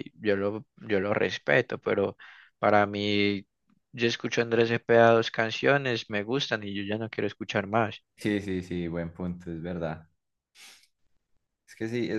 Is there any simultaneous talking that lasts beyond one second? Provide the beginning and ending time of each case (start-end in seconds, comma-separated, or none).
none